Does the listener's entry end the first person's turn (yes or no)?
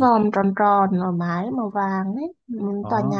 no